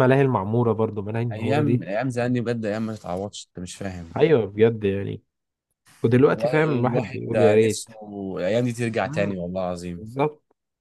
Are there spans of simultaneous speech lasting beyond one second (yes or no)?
yes